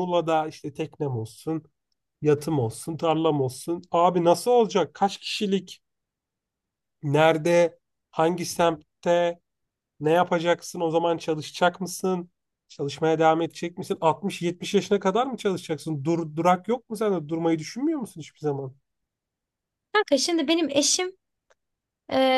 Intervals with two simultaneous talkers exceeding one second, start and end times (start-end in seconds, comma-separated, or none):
none